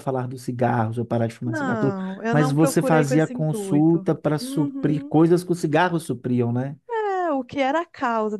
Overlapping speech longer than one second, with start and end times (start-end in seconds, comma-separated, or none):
1.4-5.2